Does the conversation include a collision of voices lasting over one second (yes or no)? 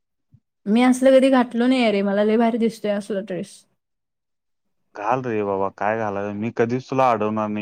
no